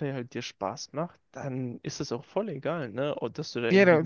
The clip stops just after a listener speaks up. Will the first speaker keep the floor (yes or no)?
yes